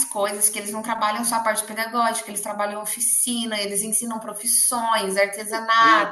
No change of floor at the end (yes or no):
no